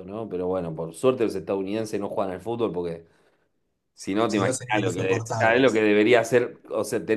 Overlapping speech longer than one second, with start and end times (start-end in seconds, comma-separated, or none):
4.2-5.8